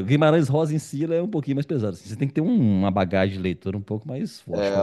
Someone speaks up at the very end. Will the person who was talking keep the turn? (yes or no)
no